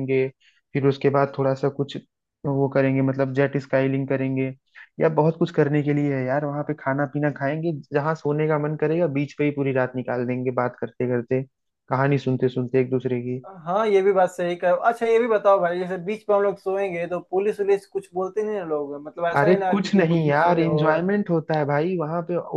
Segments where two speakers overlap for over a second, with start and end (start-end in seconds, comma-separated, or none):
19.4-20.8